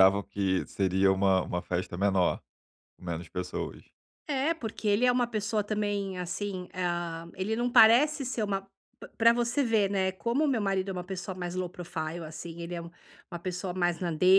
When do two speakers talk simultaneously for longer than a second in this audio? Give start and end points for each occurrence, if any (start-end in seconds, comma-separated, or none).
none